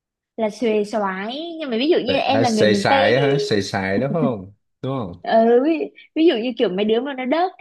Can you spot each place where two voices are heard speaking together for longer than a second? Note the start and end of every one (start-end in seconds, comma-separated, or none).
2.0-3.4